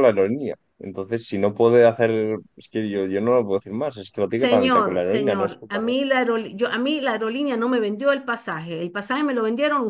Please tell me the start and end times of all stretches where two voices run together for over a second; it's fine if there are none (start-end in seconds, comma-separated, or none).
4.3-5.8